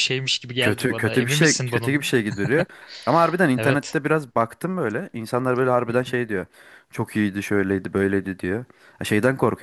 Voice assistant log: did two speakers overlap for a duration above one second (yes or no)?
yes